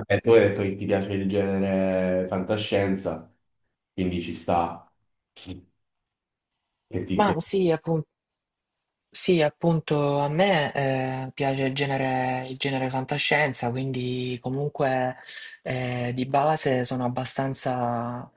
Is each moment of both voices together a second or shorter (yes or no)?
yes